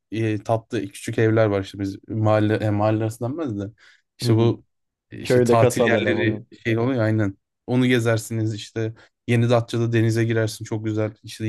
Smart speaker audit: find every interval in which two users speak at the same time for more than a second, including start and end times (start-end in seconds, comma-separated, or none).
5.2-6.5